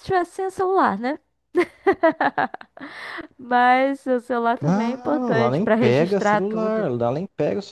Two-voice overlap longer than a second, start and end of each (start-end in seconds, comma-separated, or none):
4.6-6.9